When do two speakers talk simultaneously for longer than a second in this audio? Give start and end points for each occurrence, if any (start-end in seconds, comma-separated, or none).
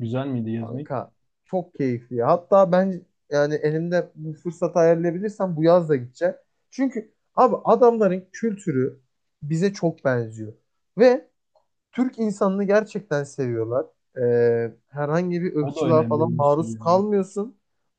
15.6-17.0